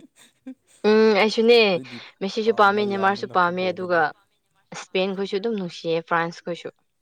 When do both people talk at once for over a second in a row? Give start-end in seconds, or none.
2.5-4.0